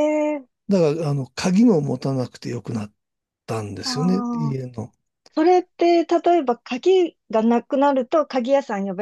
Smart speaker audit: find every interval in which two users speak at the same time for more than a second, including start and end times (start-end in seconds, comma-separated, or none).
none